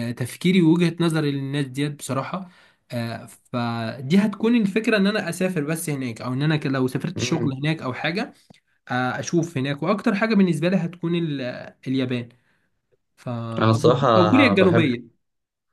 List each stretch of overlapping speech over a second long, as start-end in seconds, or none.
13.6-14.9